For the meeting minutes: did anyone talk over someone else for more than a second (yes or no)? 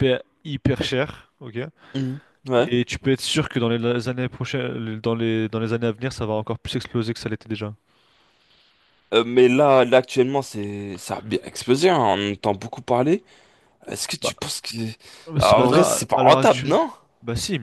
yes